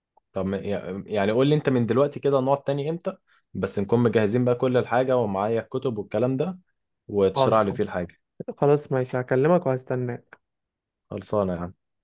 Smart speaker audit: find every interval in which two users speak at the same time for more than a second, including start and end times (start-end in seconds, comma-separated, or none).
none